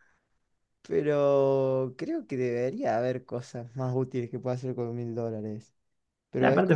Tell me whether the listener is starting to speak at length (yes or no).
yes